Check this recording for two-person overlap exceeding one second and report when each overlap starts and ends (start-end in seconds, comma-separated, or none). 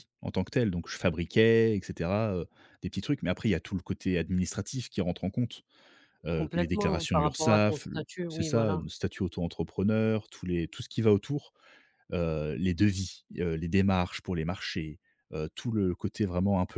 6.3-8.8